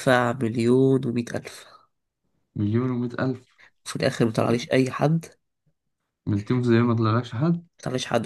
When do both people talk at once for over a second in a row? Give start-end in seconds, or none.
none